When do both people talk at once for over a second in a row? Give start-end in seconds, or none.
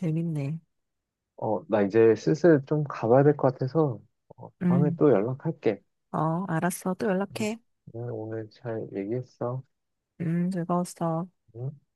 none